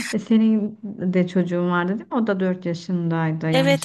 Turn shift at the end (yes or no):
yes